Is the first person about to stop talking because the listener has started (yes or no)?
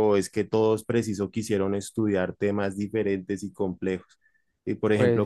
no